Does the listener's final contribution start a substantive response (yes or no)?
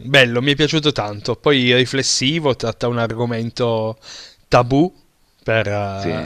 no